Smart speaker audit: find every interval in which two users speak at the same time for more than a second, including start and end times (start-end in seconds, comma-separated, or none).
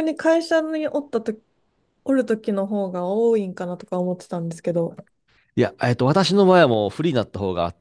none